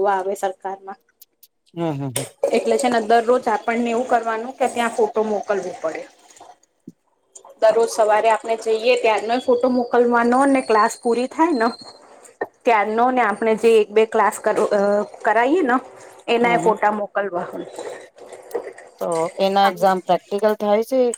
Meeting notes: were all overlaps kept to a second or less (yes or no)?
yes